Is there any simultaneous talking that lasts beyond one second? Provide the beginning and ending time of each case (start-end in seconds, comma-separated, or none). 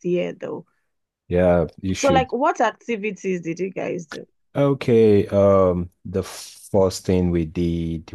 none